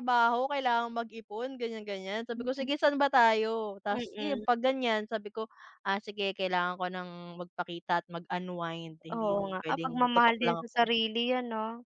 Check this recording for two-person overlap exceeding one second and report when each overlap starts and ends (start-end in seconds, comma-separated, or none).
9.1-10.9